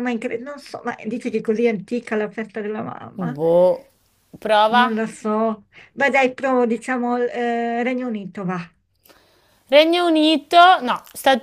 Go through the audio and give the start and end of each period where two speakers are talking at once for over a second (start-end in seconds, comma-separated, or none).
none